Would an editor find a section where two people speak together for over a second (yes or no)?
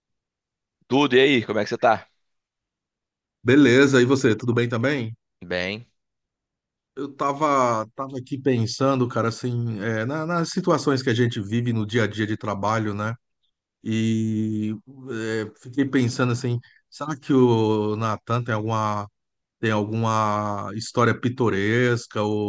no